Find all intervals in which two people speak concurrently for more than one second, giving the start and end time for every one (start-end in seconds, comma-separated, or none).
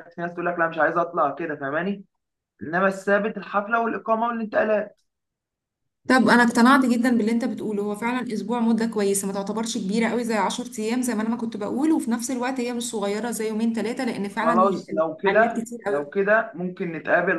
14.3-16.1